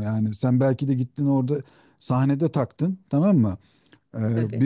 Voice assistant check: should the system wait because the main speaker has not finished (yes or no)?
yes